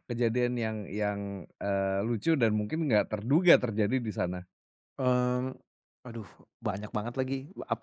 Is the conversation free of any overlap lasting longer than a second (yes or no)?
yes